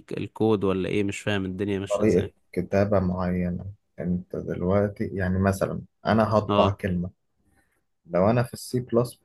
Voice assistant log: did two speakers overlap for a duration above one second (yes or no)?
no